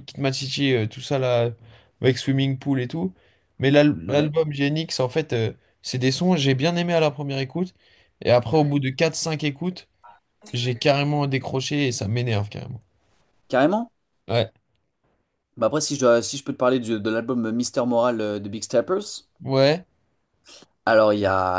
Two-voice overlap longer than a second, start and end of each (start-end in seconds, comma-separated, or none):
none